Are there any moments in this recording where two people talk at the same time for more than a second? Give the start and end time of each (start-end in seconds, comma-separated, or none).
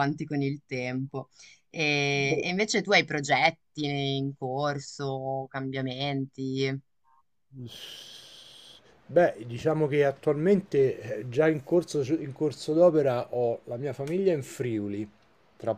none